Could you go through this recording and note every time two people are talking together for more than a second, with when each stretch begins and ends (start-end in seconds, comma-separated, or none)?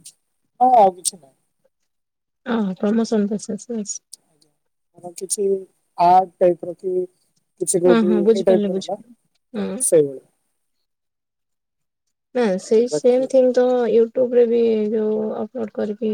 7.9-9.8